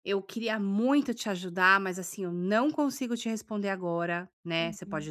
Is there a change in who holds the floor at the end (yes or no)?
no